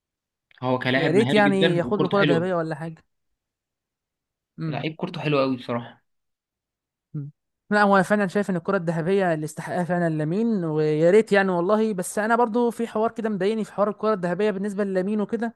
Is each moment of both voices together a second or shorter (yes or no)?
no